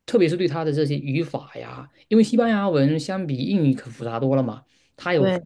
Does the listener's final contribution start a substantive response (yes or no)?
no